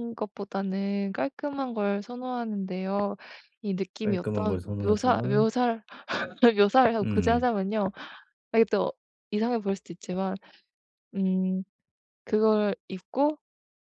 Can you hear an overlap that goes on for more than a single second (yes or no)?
yes